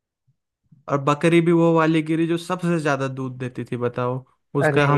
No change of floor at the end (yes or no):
yes